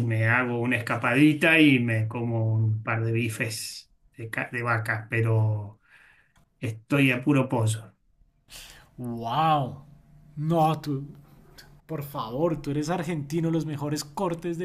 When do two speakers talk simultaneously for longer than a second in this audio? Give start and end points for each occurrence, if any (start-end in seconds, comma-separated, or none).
none